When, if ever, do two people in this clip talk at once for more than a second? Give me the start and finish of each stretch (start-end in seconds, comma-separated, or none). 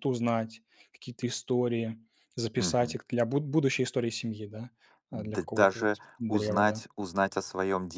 5.1-6.8